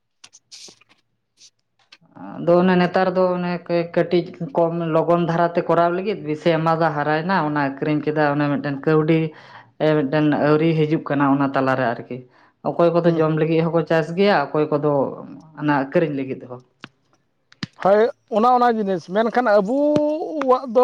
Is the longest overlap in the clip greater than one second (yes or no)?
no